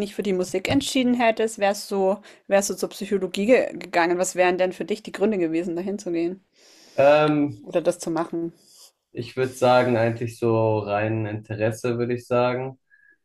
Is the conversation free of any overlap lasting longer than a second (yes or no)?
yes